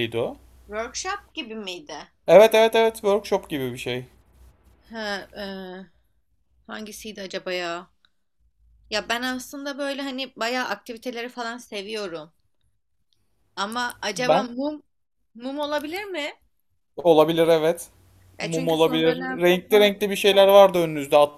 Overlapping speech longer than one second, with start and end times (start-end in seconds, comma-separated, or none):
18.4-20.0